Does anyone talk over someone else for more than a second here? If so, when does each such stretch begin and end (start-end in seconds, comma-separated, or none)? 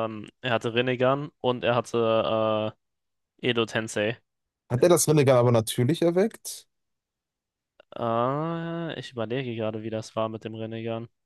none